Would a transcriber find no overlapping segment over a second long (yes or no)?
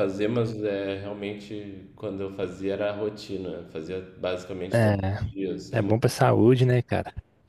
no